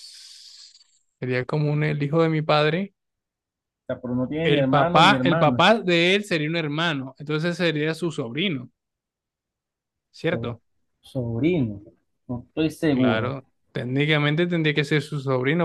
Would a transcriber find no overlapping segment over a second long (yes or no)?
no